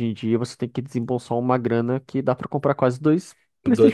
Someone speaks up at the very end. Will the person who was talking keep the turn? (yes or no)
no